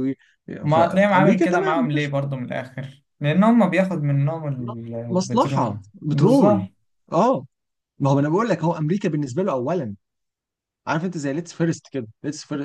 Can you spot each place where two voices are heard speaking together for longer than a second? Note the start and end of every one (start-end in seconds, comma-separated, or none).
0.7-2.1, 5.1-6.6